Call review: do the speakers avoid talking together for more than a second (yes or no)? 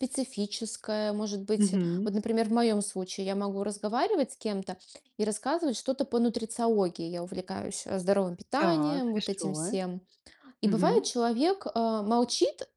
no